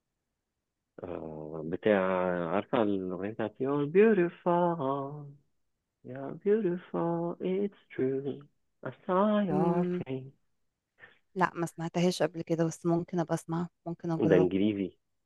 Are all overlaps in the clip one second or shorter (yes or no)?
yes